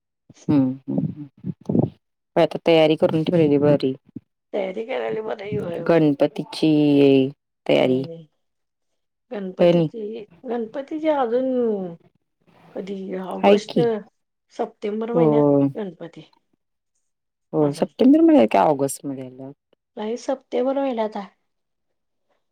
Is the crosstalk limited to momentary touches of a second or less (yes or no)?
yes